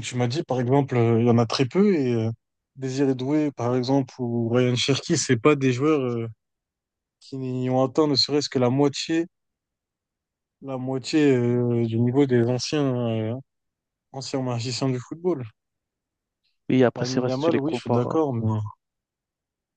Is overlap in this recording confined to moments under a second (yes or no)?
no